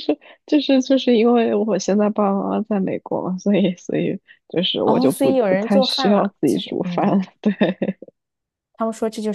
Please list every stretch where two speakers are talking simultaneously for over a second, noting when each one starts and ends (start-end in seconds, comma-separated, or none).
4.8-7.2